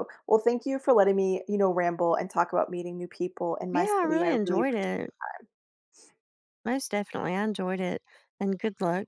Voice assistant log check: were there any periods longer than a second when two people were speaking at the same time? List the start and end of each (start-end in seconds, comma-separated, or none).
3.7-5.1